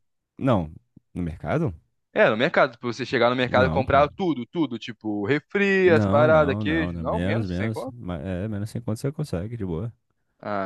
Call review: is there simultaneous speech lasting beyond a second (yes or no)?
yes